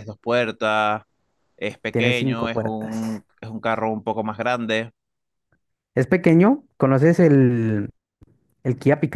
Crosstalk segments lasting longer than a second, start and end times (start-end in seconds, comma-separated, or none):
1.9-3.2